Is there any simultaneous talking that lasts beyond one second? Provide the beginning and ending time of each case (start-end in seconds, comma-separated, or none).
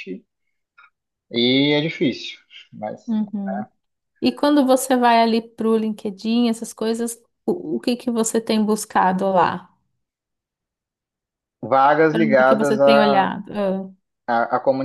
12.1-13.3